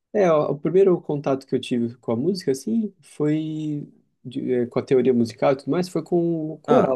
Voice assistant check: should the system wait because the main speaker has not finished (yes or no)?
yes